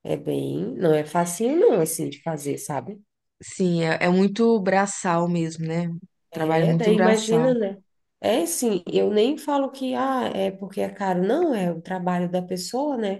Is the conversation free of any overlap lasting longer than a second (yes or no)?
no